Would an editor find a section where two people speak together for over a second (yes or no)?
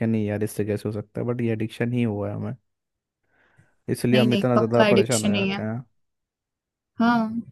yes